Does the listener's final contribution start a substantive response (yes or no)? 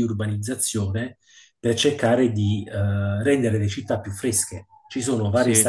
no